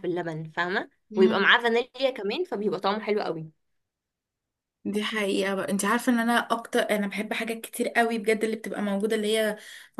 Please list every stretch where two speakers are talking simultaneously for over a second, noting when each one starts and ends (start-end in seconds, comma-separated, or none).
none